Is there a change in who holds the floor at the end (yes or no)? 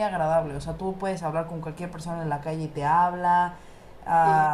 no